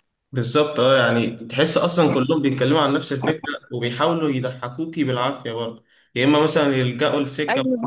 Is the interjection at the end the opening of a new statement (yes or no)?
no